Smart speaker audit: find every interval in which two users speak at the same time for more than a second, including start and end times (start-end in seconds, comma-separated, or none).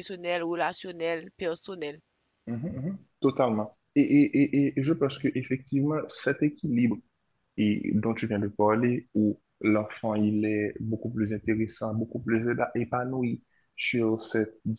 none